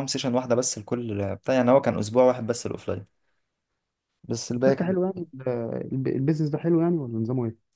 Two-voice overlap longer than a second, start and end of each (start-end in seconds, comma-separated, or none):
none